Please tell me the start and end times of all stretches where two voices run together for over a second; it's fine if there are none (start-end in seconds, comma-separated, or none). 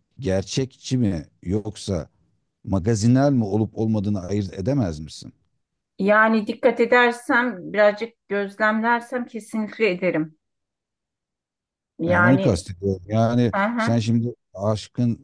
none